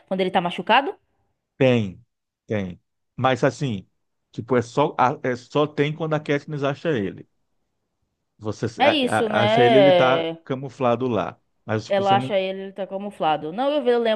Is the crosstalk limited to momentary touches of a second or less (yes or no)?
no